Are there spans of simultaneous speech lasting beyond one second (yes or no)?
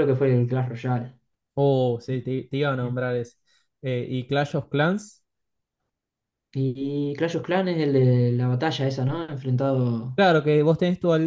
no